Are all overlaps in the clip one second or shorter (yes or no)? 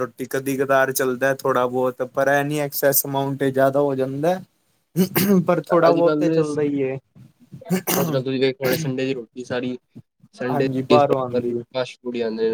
yes